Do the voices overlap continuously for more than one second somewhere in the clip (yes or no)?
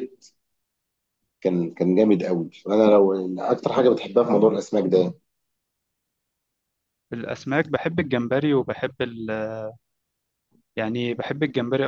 no